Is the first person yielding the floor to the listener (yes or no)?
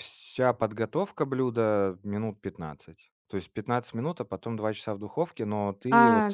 no